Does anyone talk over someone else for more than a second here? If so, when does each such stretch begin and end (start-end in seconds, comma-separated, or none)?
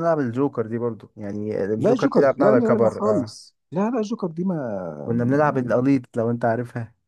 1.8-3.3